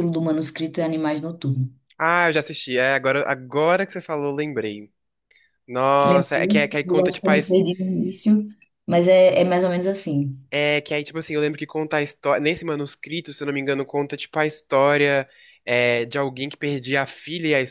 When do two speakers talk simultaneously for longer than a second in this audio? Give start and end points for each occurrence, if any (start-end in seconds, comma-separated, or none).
6.0-7.6